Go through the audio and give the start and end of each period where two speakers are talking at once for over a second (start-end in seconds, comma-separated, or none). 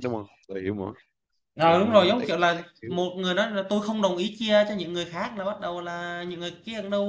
1.6-3.0